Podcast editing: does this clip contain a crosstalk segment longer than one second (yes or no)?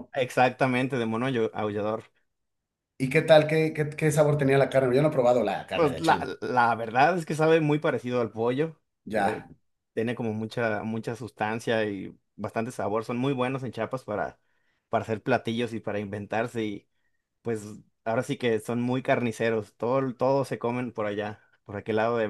no